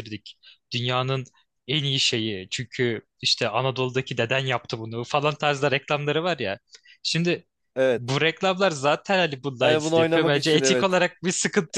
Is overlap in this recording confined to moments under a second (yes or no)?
no